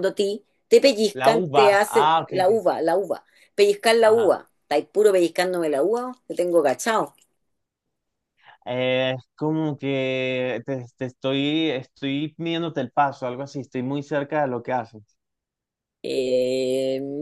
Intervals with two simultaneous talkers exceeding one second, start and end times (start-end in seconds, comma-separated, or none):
1.1-2.6